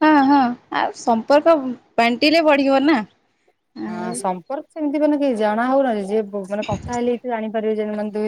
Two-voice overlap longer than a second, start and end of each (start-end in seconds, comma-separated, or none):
none